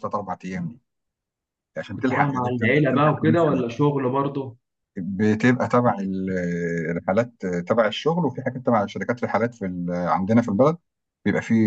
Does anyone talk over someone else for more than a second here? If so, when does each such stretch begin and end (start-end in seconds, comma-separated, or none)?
1.9-3.7